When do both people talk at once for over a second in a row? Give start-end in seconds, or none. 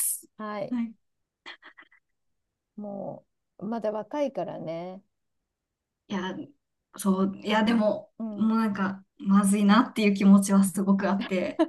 none